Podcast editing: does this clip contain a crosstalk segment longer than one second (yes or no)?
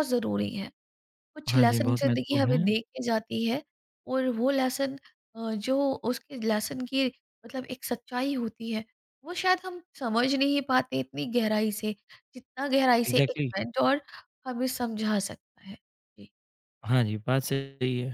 yes